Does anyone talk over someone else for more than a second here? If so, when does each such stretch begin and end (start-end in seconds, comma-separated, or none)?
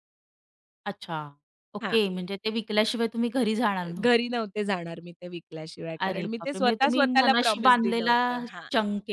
6.1-8.2